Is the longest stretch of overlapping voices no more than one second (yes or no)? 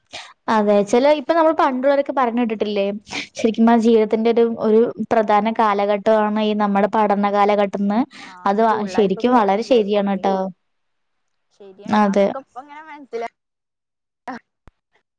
no